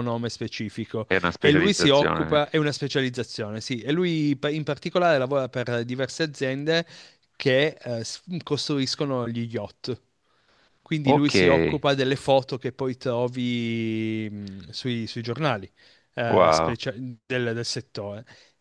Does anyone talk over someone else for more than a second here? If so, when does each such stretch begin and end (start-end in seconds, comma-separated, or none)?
1.1-2.4